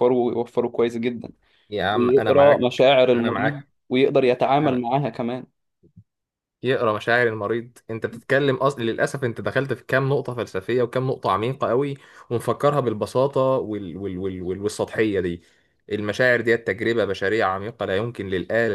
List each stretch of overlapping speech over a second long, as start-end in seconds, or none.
1.9-3.7